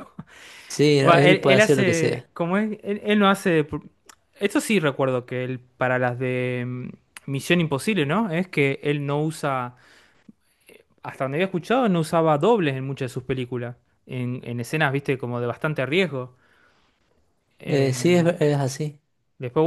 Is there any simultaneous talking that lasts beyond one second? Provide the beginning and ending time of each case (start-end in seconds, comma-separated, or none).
1.1-2.3